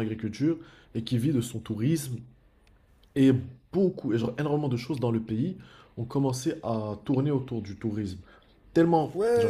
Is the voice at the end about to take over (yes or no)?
yes